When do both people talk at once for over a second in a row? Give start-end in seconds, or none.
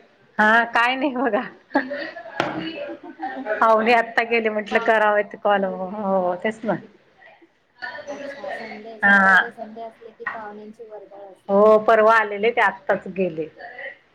none